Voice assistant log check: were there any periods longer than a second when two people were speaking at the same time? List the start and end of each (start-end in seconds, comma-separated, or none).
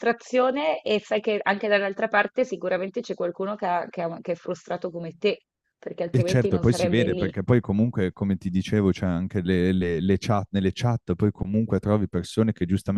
6.1-7.3